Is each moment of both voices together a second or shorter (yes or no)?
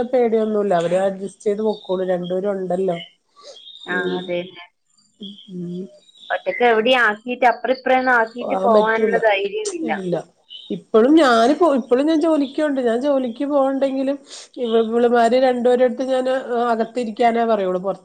yes